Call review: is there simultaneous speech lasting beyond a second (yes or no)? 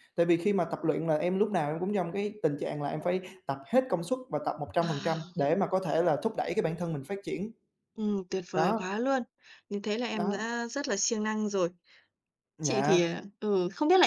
no